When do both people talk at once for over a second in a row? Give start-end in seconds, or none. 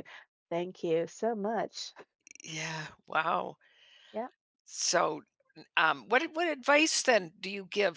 none